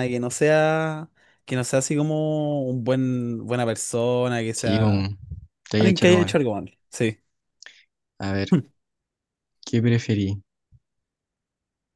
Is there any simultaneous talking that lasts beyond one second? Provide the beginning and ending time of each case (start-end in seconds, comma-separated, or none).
none